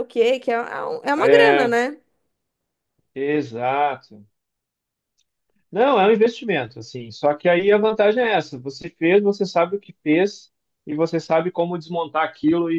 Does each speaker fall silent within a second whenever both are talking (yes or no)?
yes